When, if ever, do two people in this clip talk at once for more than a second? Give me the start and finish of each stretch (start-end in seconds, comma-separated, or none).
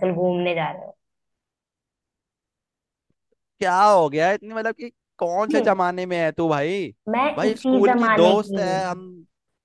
7.4-8.8